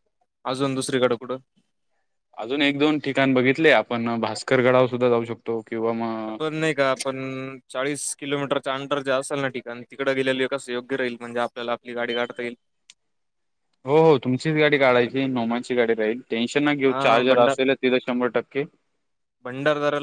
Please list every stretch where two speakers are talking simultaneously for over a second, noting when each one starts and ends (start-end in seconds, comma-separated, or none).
none